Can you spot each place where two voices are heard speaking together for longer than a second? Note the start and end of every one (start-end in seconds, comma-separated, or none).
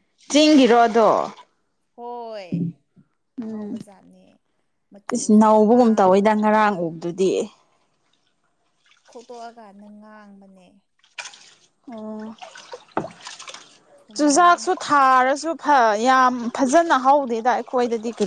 5.1-6.4